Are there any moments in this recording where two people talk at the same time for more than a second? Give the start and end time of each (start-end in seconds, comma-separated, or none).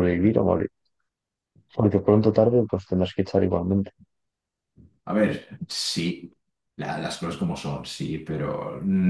none